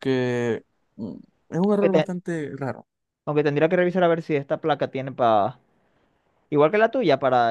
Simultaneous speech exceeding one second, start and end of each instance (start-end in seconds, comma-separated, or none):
none